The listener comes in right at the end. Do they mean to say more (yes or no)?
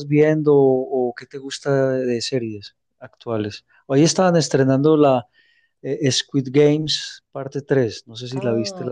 yes